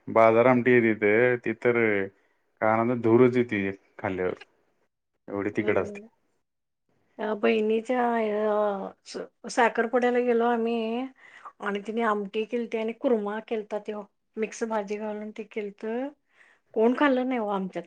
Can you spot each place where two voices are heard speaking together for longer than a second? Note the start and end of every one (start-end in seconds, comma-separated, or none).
none